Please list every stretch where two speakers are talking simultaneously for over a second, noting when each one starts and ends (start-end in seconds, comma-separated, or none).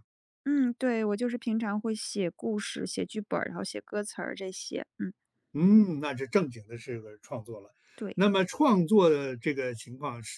none